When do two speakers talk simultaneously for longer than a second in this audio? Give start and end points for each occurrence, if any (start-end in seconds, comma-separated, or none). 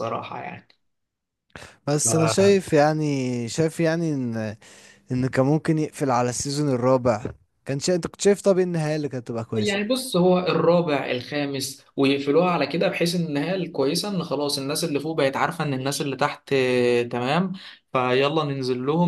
none